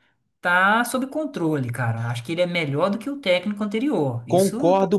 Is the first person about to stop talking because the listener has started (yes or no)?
yes